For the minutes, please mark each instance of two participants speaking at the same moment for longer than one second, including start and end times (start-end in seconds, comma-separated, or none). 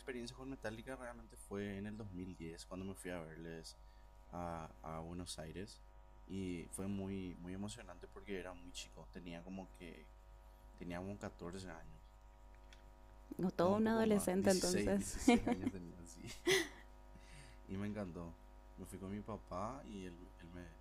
13.6-15.1